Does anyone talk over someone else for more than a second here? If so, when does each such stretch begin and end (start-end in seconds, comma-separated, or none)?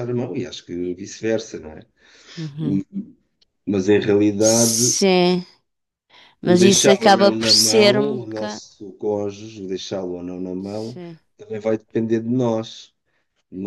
6.4-8.6